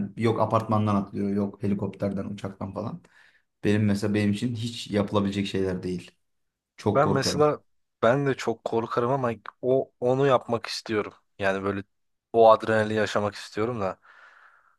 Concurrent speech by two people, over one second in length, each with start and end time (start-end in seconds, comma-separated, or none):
none